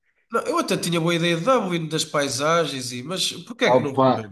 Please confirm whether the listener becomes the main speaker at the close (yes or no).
yes